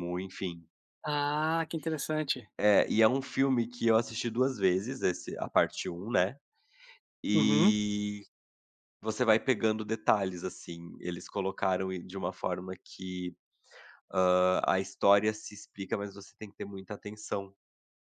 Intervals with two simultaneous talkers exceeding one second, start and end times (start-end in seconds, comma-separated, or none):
none